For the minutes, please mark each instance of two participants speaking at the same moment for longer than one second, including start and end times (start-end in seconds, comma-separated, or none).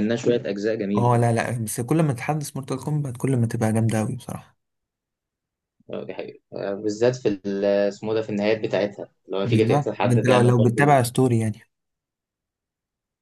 9.4-11.0